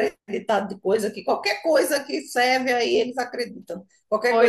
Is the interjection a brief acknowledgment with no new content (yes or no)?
no